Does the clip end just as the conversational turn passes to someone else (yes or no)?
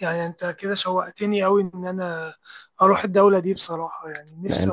yes